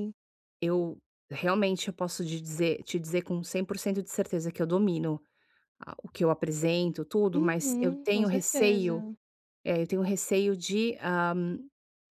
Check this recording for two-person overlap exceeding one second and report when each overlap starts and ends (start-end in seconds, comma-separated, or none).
7.3-9.0